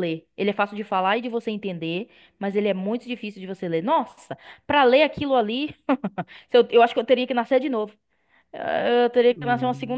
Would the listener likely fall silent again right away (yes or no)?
yes